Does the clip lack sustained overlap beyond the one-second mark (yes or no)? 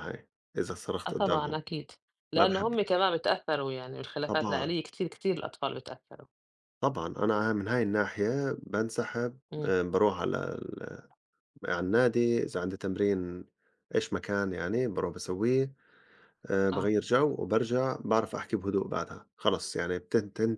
yes